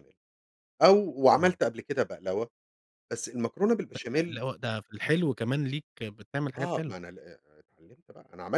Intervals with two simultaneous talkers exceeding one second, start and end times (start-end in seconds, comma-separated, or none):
none